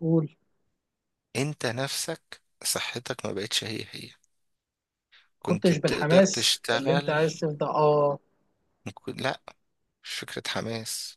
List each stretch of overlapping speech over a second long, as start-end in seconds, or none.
5.4-7.2